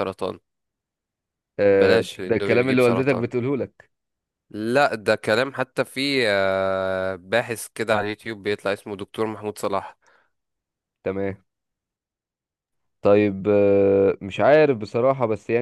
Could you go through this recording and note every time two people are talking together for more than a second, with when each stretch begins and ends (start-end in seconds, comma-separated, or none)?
1.7-3.2